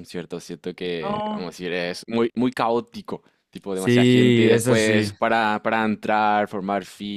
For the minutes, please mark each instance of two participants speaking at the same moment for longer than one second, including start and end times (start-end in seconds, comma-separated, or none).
3.7-5.1